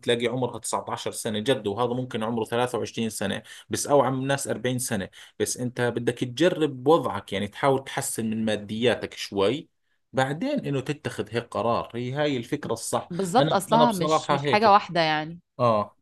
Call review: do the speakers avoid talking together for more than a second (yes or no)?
no